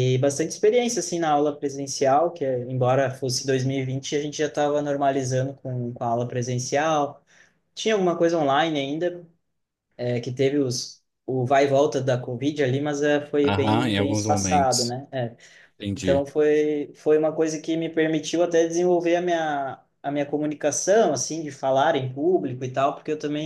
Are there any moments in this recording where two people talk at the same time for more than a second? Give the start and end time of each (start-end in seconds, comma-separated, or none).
13.4-14.9